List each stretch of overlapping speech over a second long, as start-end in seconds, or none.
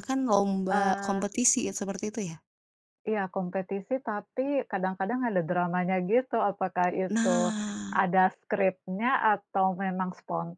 none